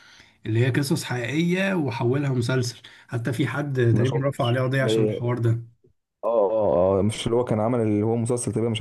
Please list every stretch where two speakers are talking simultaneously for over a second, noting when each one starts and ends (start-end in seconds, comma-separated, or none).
3.9-5.2